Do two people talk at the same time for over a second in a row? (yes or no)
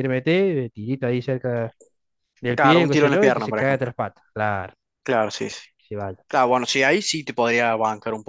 yes